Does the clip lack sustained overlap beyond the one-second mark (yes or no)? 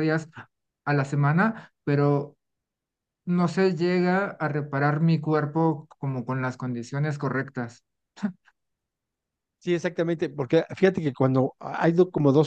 yes